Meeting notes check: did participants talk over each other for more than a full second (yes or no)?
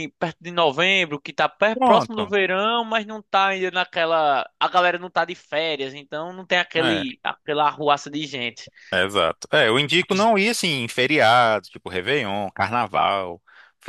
no